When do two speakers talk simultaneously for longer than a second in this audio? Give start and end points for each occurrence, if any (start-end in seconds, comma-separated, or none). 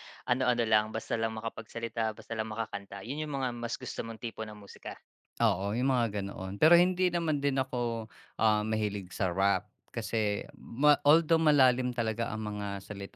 none